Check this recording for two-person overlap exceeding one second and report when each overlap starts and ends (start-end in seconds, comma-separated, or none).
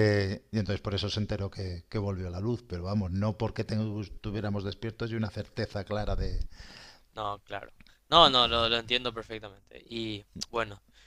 none